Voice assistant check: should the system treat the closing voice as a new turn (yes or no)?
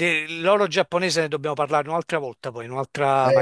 yes